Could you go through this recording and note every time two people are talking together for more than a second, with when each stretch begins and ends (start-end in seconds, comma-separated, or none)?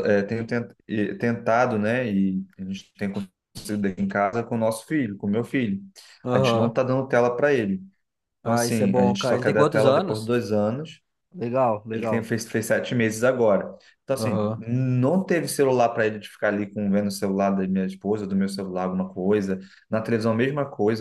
8.4-10.3